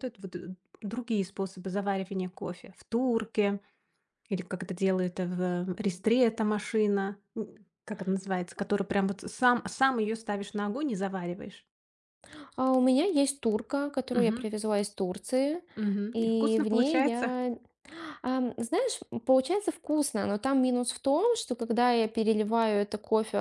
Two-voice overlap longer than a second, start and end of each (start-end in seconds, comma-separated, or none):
16.1-17.4